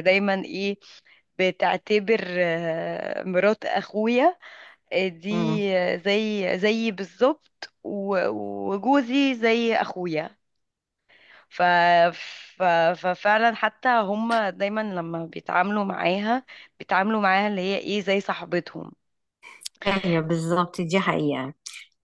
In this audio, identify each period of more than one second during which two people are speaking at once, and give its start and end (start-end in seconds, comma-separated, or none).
none